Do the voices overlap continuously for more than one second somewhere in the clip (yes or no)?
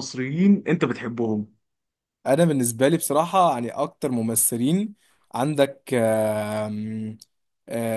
no